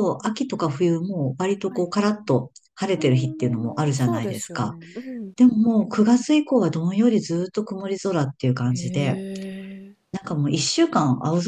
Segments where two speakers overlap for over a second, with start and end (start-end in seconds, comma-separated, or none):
2.9-4.8